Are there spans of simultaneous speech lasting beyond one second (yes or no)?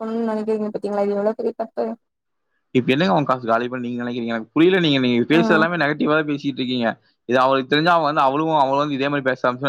no